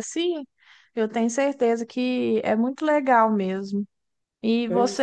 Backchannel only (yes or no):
yes